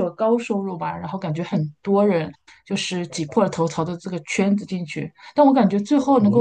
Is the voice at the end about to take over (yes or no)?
no